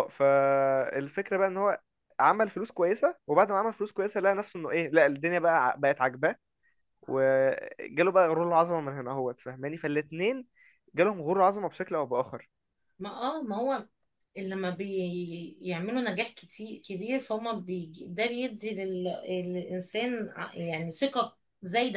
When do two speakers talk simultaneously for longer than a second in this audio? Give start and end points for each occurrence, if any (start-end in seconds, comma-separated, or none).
none